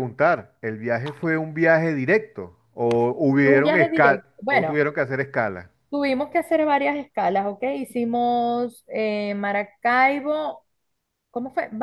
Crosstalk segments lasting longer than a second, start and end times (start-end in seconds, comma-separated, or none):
3.4-4.7